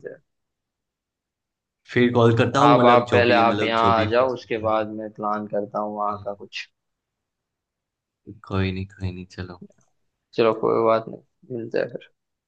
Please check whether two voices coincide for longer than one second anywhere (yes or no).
yes